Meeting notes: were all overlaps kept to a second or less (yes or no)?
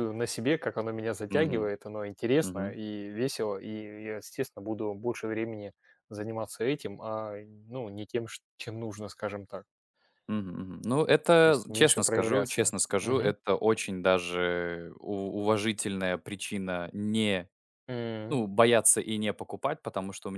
no